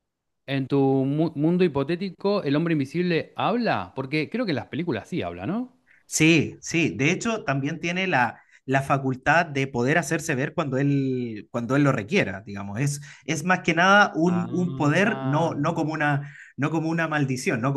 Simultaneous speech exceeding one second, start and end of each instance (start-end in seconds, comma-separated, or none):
14.2-15.5